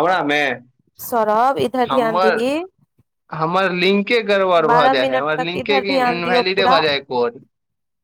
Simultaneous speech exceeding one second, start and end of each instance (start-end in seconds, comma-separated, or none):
4.7-6.8